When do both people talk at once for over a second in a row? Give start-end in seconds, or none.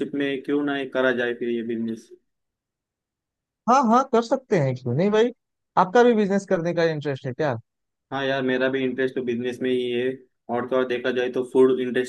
none